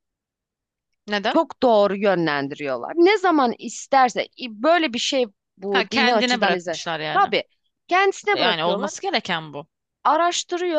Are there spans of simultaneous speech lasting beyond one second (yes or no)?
yes